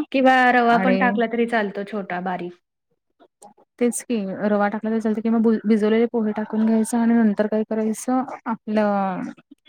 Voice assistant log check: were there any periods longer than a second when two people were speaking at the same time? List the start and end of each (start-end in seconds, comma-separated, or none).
none